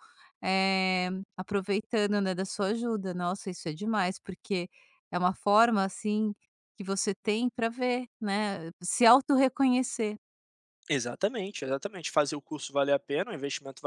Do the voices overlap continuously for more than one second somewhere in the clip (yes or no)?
no